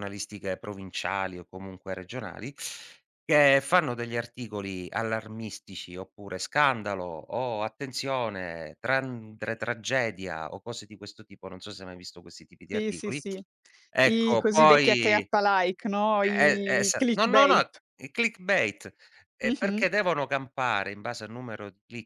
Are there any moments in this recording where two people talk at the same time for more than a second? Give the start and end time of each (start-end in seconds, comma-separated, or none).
14.0-15.3, 16.2-17.8